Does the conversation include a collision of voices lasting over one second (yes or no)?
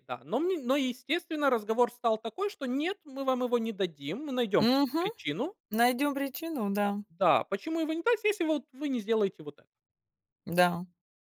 no